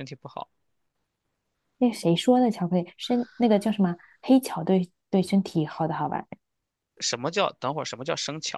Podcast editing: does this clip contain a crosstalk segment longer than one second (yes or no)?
no